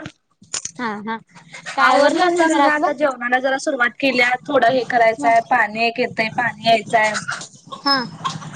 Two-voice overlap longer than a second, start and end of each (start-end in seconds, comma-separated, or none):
1.9-3.2